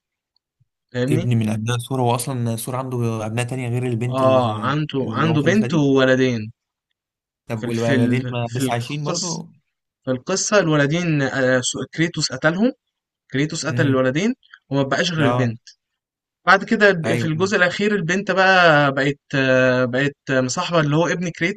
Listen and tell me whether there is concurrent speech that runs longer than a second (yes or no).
yes